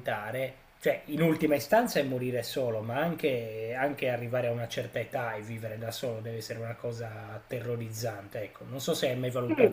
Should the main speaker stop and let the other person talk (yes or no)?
yes